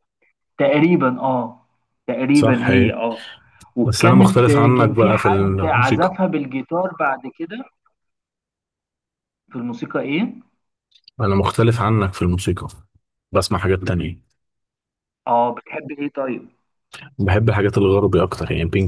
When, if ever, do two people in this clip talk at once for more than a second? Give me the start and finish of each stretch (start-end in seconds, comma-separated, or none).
3.8-6.2